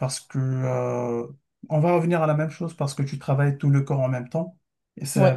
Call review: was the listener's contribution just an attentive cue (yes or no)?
yes